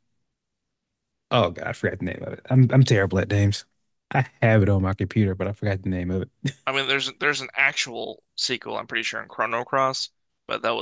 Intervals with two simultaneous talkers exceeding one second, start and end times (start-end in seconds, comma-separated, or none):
none